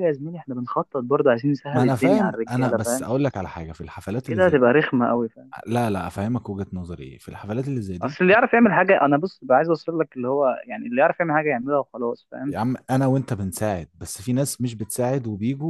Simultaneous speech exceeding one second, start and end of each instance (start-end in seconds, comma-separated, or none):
1.7-3.0